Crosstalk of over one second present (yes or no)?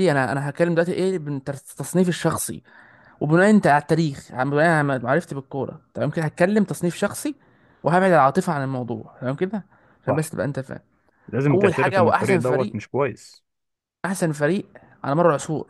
yes